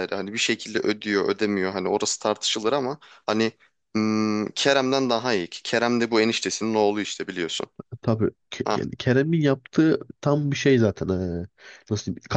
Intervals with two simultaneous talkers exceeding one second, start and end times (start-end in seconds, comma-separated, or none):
none